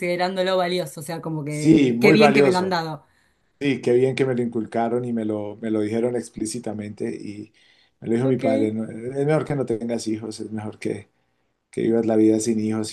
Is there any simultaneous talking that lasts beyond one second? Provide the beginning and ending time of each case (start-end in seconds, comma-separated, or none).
1.5-2.8